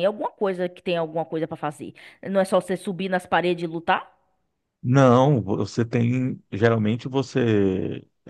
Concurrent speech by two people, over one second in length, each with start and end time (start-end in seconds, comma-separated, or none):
none